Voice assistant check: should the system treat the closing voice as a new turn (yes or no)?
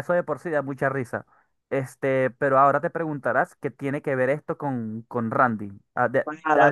yes